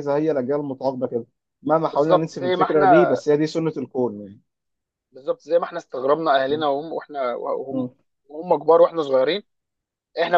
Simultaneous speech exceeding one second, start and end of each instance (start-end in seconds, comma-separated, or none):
1.9-3.2